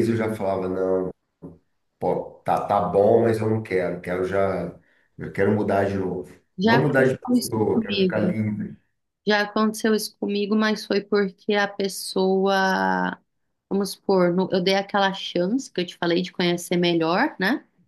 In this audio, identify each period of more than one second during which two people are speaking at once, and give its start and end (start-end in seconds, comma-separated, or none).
6.6-8.3